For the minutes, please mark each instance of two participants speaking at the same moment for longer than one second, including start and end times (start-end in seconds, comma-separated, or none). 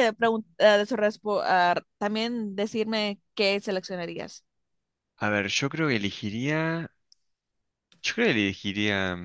none